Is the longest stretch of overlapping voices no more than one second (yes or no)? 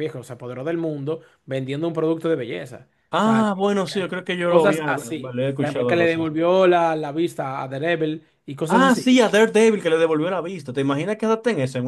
no